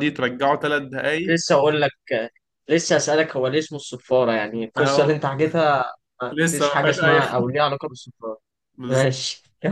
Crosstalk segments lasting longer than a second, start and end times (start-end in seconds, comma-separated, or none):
6.3-7.5